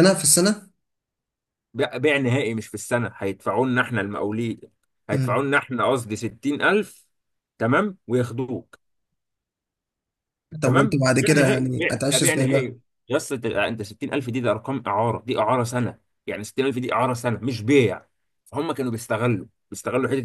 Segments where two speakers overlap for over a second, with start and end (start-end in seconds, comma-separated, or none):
10.6-12.7